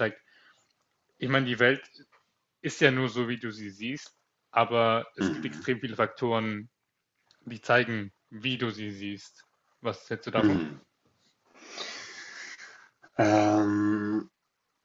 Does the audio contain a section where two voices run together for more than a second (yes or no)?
no